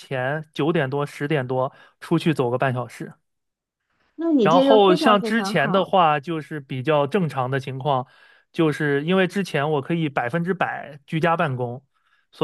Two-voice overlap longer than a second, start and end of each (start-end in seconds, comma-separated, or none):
4.4-5.9